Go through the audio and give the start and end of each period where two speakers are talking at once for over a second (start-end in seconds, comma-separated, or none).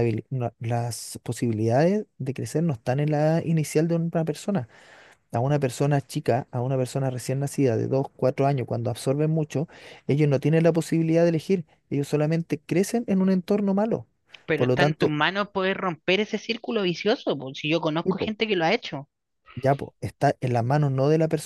none